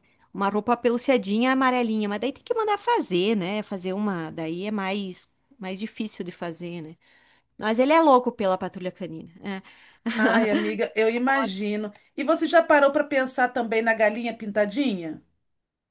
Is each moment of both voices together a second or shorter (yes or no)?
yes